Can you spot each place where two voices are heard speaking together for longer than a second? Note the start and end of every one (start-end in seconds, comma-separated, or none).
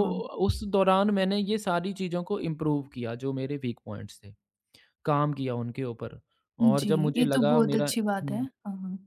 6.7-8.5